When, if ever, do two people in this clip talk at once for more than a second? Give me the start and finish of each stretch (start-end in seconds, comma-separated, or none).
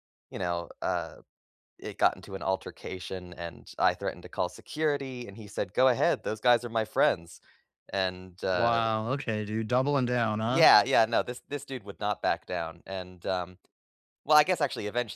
none